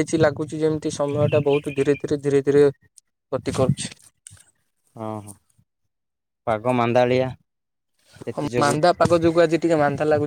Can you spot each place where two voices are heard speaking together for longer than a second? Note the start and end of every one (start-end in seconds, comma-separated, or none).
none